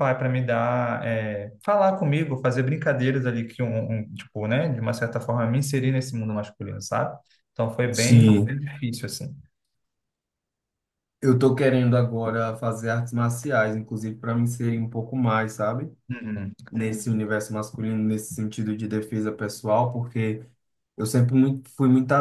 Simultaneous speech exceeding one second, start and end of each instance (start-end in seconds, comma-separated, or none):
none